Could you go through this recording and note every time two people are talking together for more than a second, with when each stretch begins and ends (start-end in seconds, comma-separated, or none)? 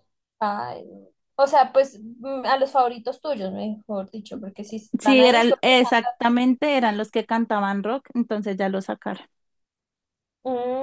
5.0-6.3